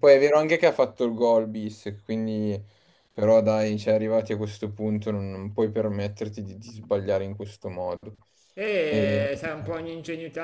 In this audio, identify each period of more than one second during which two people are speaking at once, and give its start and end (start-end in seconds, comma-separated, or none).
none